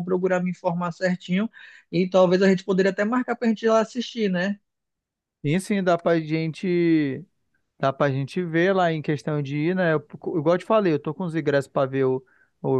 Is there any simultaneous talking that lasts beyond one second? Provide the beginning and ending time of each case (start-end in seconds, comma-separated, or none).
none